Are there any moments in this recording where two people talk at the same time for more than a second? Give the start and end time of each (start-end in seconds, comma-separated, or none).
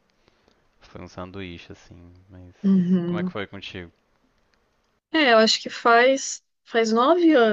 none